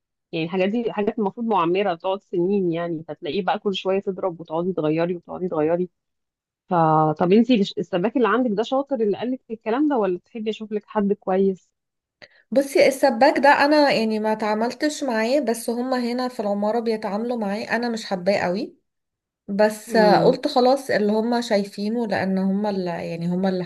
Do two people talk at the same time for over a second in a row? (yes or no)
no